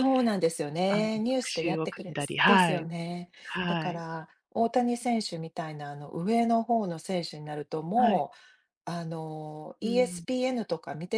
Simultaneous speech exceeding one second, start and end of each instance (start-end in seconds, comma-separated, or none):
0.9-2.9